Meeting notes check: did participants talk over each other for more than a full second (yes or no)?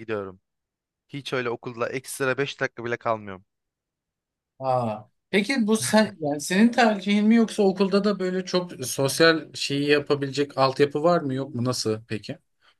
no